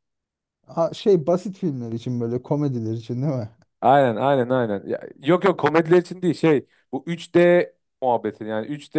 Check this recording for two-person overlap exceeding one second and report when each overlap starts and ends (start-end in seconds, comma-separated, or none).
none